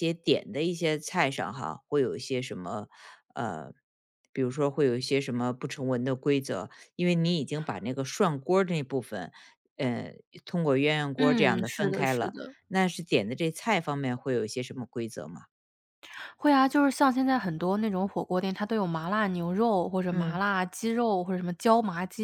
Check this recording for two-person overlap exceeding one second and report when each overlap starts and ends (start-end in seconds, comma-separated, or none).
11.2-12.6